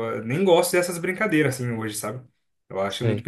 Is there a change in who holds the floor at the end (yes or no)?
no